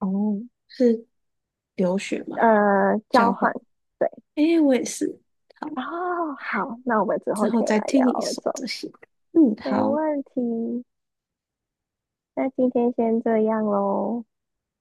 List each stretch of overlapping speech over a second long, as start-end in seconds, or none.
7.3-8.6